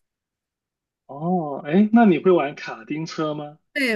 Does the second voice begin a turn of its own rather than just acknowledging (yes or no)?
yes